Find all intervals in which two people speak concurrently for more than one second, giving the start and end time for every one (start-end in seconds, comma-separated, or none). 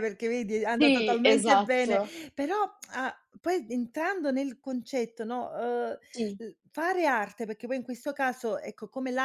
0.8-2.2